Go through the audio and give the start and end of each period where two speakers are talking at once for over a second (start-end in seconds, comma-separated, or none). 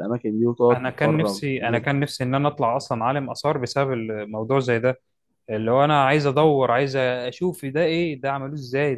0.7-2.0